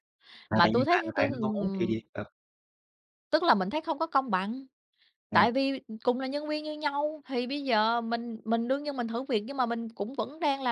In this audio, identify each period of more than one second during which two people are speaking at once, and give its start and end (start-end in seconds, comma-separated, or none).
0.5-1.9